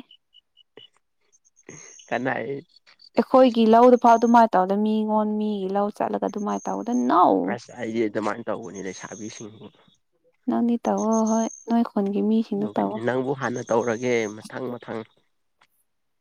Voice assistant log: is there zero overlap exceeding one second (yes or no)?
yes